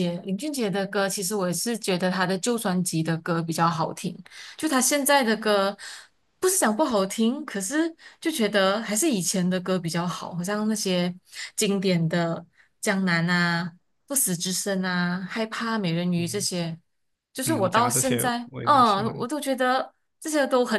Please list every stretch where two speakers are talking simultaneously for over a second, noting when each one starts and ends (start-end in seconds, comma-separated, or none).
17.4-19.3